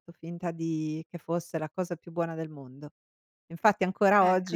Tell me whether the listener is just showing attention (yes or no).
yes